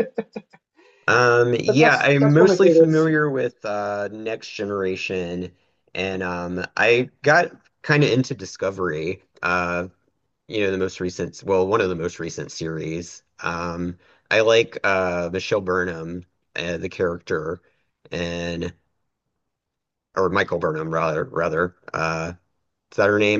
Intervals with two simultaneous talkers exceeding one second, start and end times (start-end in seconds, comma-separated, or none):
1.7-3.1